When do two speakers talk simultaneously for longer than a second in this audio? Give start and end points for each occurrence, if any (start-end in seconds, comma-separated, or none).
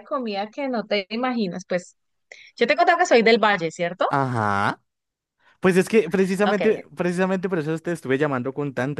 none